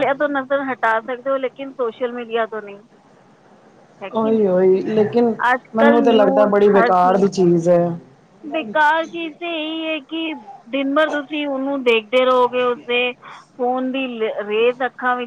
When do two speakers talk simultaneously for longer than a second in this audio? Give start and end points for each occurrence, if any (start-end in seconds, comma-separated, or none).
5.8-7.3